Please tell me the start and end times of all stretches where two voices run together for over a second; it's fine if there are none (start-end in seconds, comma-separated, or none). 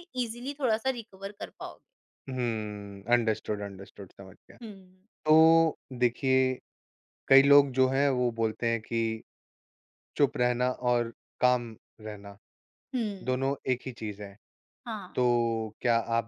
none